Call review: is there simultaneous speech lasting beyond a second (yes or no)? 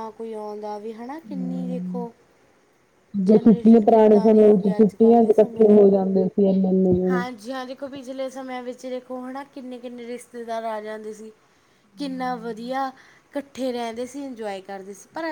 yes